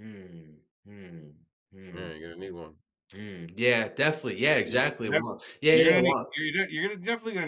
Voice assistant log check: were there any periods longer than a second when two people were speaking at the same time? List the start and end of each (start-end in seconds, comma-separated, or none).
4.7-6.2